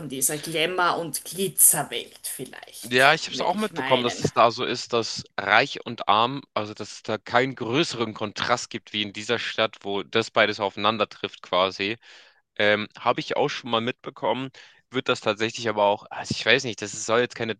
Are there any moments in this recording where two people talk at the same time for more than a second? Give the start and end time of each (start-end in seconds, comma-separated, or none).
2.8-4.3